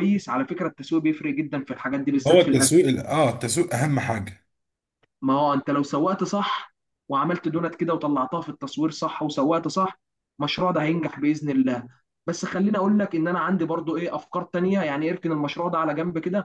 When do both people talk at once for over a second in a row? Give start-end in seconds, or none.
none